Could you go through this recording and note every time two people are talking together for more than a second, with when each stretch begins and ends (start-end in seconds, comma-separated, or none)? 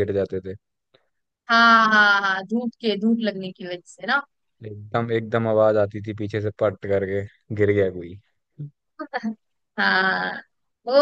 none